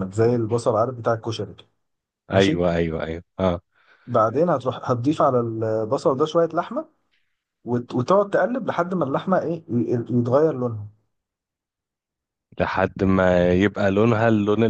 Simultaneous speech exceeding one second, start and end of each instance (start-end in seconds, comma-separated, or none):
none